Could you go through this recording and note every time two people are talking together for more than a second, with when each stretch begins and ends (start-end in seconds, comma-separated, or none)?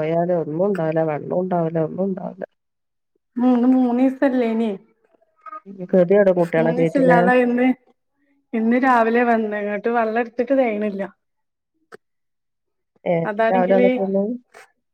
none